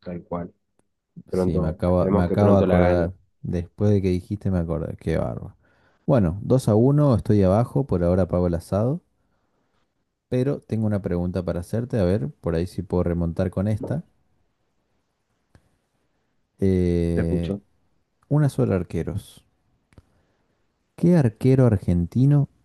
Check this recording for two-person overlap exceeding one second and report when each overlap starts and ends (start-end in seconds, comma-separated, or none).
1.3-3.1